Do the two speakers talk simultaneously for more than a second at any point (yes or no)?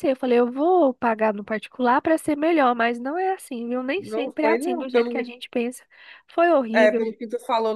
yes